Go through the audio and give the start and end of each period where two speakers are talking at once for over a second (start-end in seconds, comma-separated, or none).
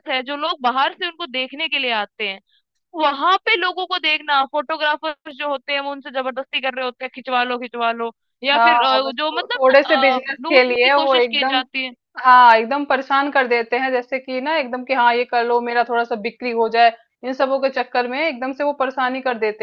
8.5-11.6